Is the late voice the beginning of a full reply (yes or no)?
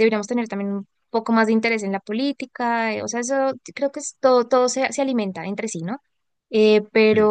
no